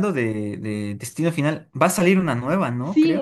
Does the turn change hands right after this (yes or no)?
yes